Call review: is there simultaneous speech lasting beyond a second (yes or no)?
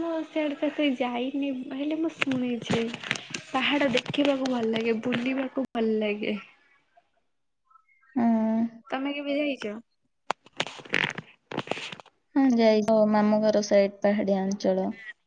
no